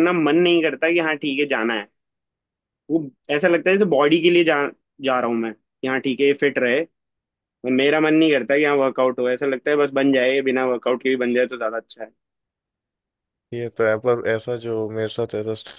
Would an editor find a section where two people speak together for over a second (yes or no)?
no